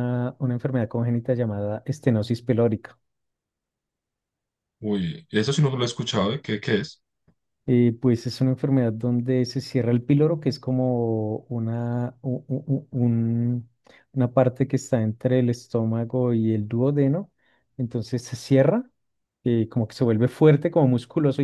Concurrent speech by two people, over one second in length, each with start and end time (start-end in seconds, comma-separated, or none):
none